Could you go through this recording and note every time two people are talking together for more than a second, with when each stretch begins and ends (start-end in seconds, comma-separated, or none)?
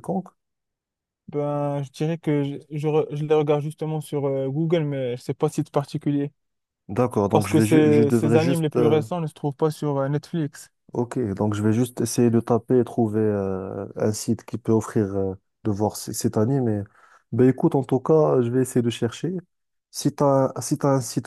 7.3-9.0